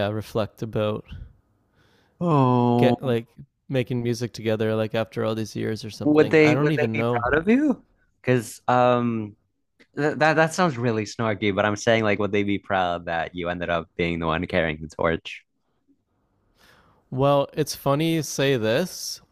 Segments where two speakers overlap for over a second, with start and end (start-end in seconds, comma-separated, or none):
6.0-7.2